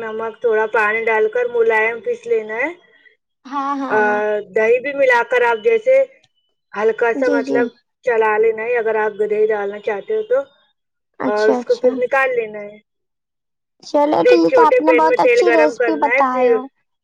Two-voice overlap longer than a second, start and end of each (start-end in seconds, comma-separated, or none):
14.3-16.5